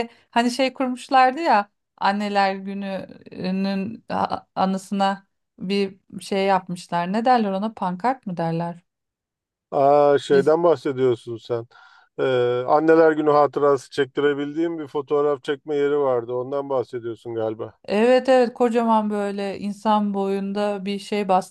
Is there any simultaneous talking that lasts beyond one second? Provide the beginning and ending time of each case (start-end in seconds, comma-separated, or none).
none